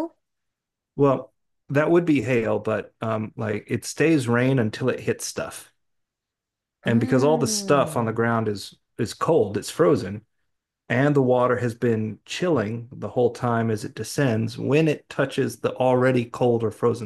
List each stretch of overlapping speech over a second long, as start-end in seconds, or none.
6.9-8.2